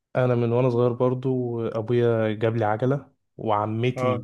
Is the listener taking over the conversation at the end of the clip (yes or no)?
no